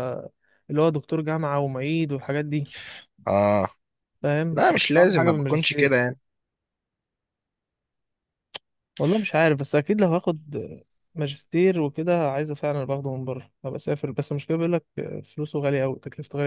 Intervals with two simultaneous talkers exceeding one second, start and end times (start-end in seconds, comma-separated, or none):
4.5-6.1